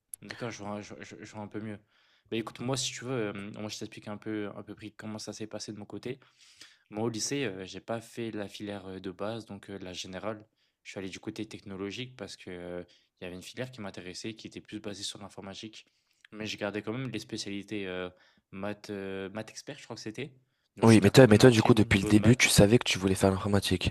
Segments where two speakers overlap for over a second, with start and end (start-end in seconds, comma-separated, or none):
20.8-22.6